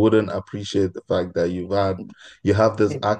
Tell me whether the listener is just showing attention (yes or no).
yes